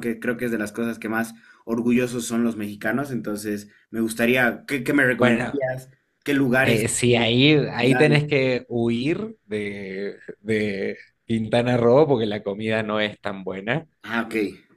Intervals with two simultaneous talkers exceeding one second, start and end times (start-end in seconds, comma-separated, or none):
none